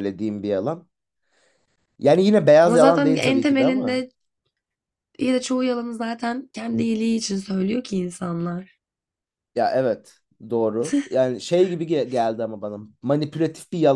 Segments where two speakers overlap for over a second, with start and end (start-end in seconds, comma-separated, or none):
2.6-4.0